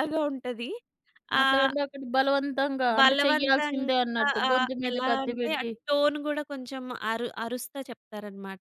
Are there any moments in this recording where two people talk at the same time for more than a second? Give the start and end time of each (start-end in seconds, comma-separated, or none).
3.0-5.7